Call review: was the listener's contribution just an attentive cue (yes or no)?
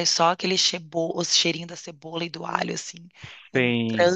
no